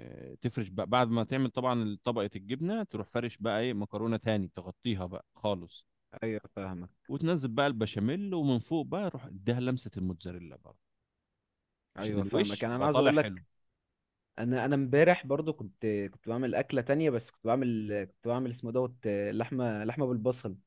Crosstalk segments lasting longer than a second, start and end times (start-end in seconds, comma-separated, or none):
12.0-13.4